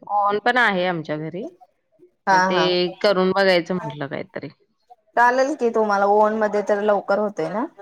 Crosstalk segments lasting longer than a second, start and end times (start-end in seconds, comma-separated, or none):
none